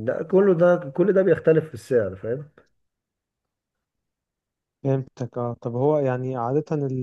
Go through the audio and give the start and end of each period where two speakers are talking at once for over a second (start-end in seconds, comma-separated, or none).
none